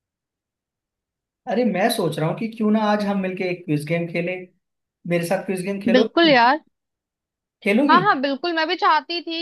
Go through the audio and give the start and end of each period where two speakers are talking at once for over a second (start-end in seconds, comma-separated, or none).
none